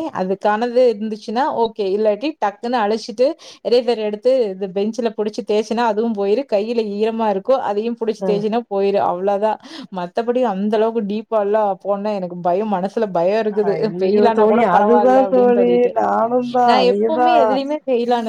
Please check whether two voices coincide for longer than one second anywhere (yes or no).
yes